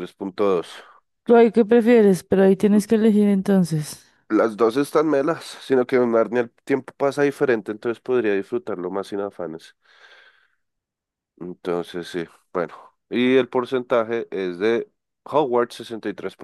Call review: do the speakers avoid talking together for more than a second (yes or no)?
yes